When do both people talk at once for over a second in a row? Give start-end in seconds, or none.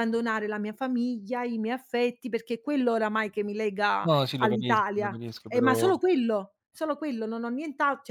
4.0-5.9